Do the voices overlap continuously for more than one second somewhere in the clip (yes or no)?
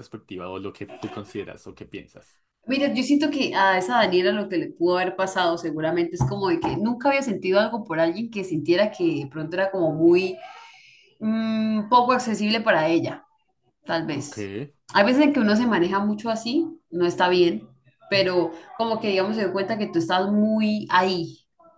no